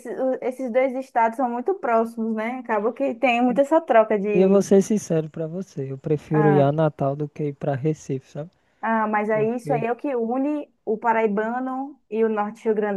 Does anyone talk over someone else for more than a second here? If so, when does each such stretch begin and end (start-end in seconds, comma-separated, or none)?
none